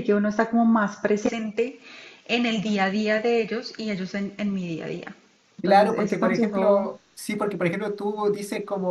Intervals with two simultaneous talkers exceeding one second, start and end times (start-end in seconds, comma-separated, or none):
5.6-6.9